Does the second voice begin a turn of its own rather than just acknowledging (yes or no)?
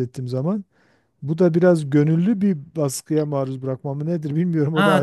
yes